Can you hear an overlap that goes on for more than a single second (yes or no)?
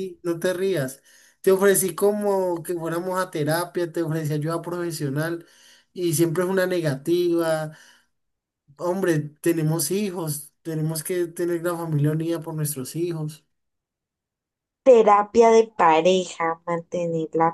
no